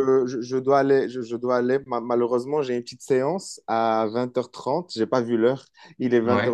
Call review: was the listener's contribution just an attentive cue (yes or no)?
yes